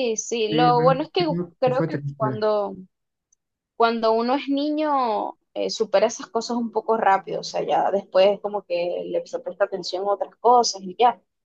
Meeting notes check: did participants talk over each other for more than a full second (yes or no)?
yes